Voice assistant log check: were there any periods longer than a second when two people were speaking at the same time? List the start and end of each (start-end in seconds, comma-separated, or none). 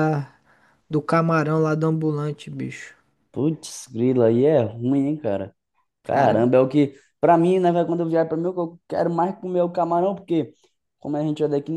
none